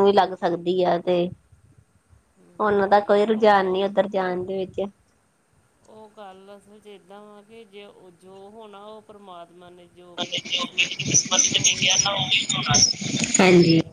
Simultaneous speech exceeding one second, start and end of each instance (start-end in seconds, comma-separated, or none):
2.6-3.8